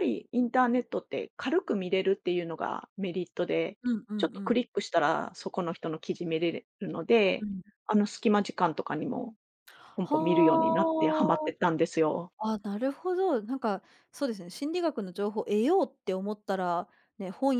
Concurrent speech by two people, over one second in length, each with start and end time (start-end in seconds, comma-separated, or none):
10.0-11.5